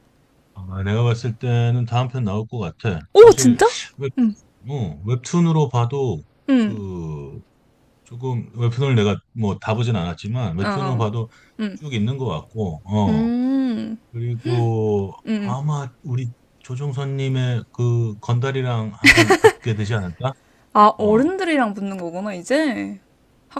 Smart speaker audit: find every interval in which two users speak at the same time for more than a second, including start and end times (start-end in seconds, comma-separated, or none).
none